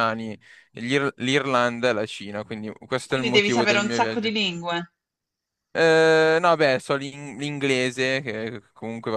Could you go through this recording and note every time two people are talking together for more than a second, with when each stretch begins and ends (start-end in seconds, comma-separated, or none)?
3.1-4.3